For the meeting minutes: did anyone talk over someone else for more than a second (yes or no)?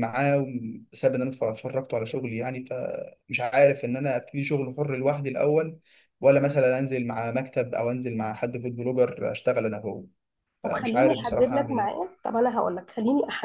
yes